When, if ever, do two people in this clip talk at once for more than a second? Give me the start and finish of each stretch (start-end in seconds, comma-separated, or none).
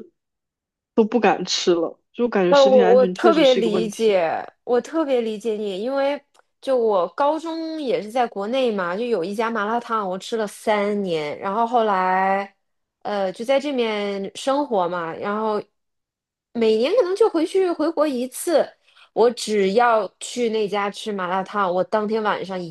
2.5-4.2